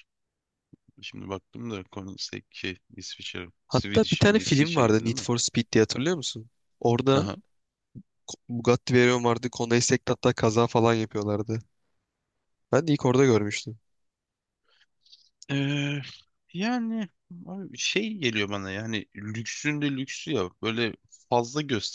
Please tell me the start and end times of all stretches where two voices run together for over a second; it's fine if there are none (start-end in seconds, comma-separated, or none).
3.6-5.3